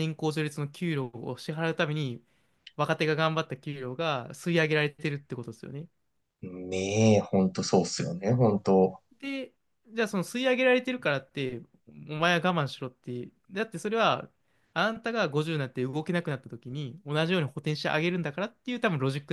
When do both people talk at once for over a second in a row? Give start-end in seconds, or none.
none